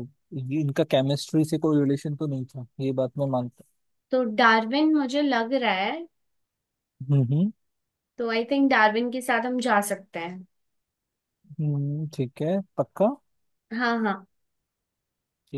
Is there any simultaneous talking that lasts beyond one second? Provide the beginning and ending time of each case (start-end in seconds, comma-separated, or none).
none